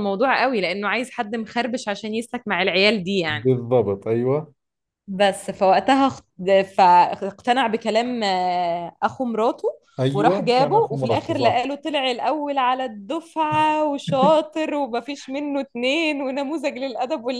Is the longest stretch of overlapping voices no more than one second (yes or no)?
no